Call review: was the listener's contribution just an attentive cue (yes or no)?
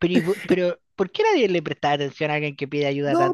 no